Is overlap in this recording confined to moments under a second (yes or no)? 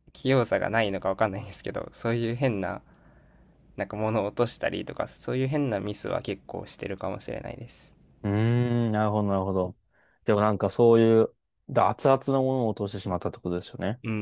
yes